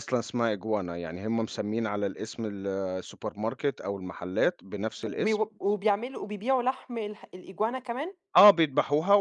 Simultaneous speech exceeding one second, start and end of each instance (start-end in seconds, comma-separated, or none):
none